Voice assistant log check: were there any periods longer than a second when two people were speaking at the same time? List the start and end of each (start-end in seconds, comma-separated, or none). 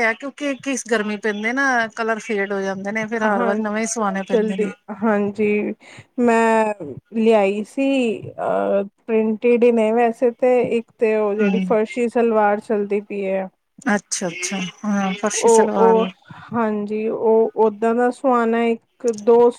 3.2-4.7